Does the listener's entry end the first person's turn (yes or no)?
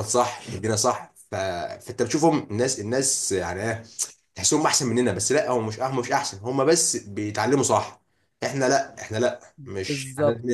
yes